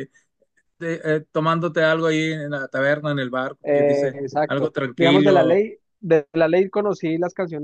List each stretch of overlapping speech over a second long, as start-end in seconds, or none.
3.6-5.6